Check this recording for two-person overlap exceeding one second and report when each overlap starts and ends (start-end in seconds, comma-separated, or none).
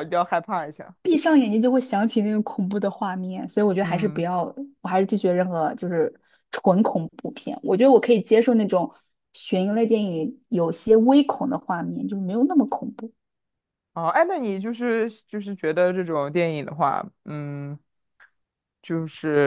none